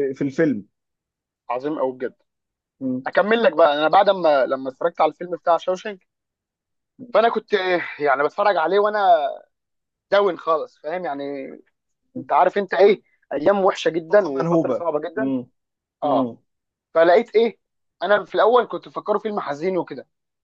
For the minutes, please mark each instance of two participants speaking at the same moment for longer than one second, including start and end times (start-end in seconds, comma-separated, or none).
13.9-15.3